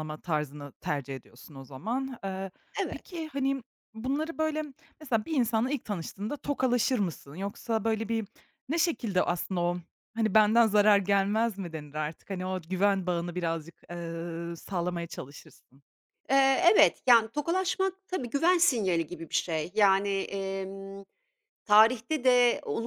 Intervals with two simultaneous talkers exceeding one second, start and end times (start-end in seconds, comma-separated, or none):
none